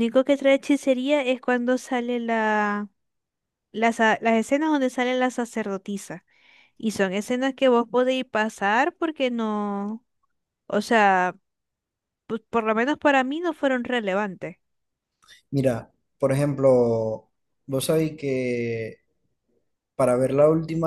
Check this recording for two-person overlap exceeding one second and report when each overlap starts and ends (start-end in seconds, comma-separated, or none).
none